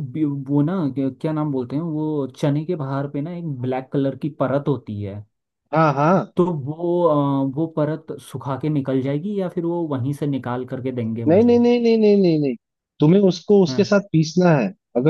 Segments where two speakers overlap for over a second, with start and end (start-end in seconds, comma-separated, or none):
none